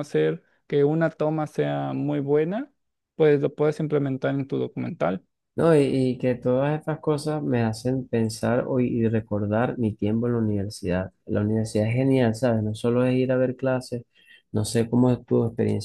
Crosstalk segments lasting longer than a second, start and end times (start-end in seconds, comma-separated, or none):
none